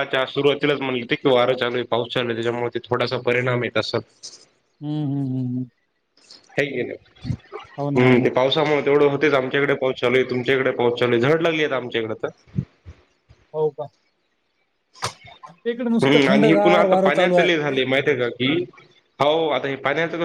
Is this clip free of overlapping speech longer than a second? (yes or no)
no